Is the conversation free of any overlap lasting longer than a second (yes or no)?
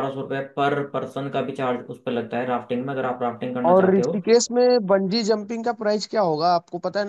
yes